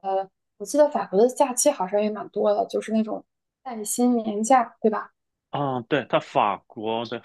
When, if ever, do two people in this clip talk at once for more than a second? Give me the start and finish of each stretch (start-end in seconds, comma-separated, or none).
none